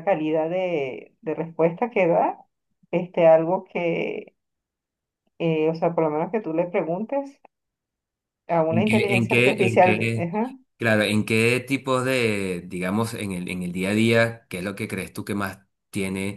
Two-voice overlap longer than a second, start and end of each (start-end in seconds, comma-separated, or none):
8.7-10.3